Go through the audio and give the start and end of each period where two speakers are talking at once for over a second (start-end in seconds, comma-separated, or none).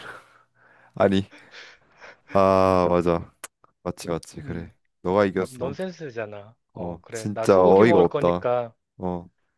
6.8-8.5